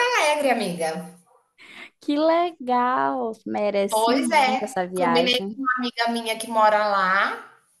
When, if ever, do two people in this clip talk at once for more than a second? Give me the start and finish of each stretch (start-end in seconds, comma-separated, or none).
3.9-5.6